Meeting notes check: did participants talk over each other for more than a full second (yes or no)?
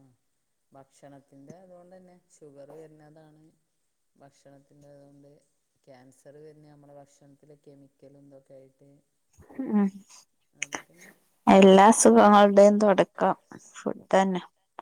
no